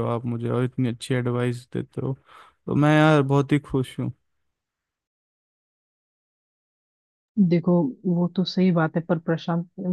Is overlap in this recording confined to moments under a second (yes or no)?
yes